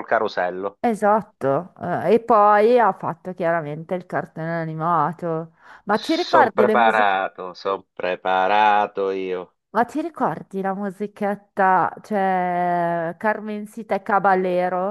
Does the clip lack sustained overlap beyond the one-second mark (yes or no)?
no